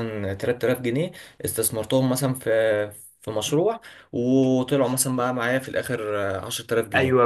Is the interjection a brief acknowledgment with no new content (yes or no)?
no